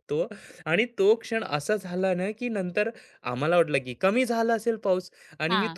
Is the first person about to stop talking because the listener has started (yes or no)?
no